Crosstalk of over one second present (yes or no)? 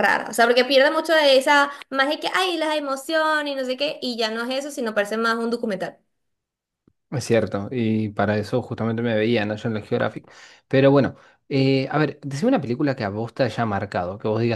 no